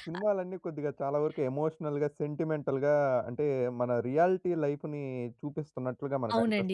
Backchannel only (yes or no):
no